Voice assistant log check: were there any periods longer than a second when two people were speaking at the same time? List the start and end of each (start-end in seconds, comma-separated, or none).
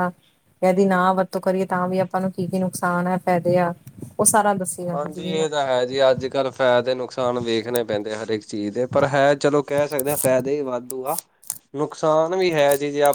none